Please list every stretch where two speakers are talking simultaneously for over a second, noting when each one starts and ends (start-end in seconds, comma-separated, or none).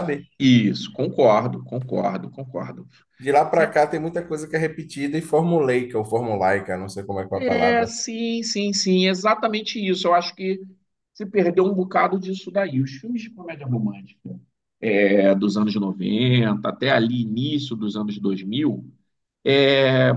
none